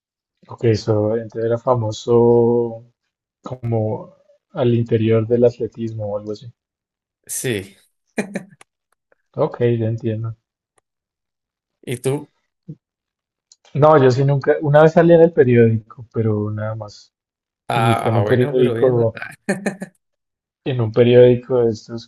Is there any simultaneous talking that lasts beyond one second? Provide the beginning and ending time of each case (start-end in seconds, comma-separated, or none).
17.7-19.2